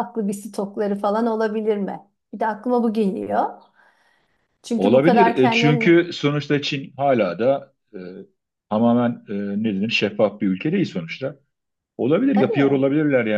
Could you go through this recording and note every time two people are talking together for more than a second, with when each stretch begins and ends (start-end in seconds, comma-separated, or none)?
4.8-6.0